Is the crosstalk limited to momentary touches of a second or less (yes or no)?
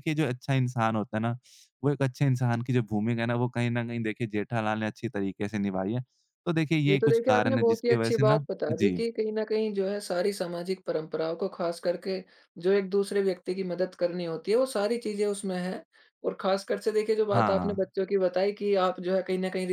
no